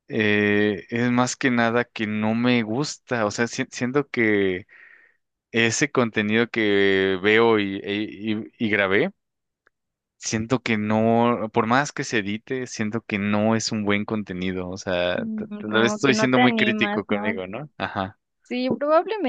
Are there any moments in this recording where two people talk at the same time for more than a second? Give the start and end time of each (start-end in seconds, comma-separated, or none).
15.2-17.2